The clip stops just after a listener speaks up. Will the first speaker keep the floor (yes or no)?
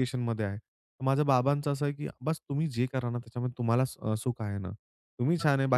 yes